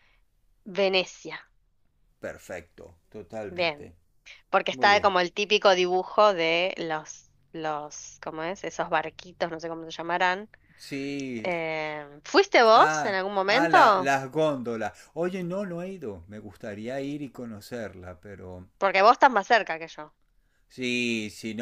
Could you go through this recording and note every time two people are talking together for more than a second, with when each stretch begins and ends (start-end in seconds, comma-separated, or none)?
12.7-14.1